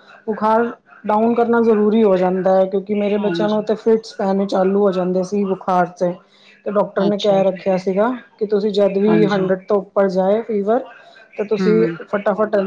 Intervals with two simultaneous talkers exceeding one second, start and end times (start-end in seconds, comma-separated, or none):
none